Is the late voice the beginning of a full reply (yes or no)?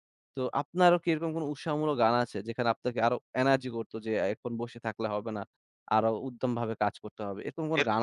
yes